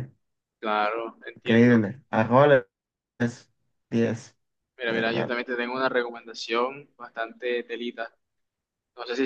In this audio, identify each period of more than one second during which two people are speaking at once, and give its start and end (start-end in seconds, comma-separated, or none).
none